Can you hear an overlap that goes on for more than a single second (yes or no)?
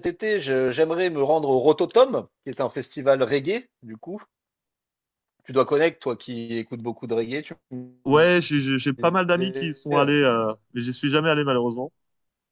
yes